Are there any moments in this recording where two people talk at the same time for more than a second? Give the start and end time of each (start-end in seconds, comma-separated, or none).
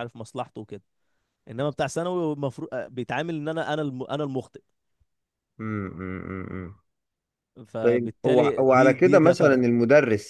7.8-9.6